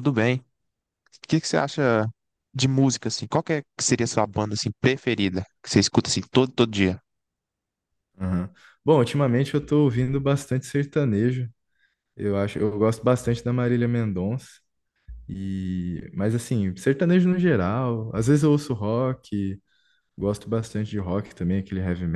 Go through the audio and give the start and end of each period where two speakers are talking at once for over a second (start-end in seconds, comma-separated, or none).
none